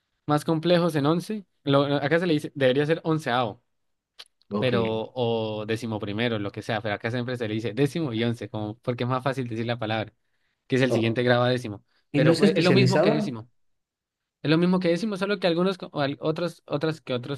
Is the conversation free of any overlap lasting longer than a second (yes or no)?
no